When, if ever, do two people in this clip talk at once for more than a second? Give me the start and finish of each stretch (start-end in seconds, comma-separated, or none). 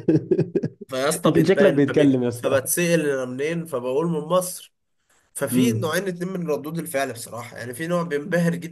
1.2-2.6